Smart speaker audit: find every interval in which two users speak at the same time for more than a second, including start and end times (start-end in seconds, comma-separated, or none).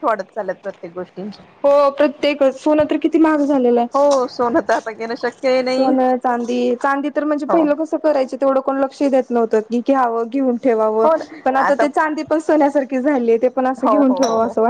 none